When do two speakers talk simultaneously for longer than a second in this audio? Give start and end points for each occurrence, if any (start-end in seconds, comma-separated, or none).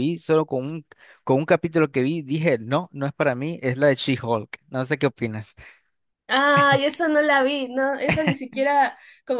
none